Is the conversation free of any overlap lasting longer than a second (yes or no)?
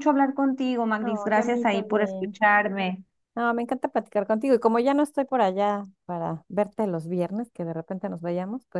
no